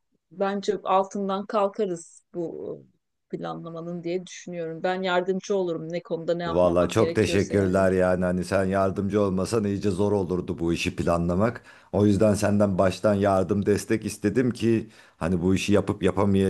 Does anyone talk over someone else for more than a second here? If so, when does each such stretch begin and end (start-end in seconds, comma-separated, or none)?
6.5-7.9